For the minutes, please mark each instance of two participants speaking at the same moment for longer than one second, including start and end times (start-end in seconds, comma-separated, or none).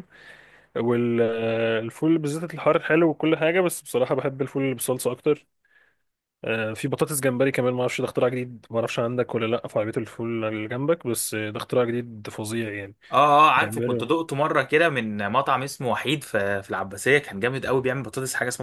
none